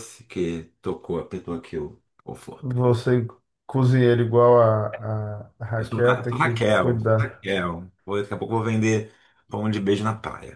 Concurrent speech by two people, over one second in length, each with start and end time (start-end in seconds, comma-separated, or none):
5.8-7.4